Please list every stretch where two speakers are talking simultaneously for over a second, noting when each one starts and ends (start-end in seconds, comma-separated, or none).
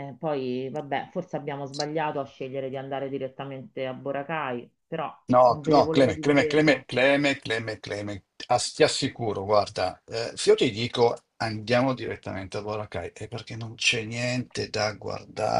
5.3-6.8